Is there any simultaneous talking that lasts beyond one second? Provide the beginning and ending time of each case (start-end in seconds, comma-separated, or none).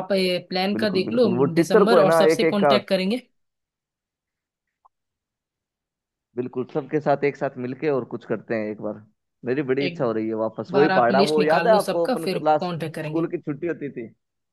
0.7-2.8, 10.7-13.3